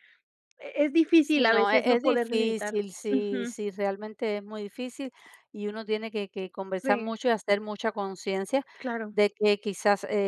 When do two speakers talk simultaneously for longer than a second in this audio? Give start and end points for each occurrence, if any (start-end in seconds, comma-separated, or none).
1.2-3.5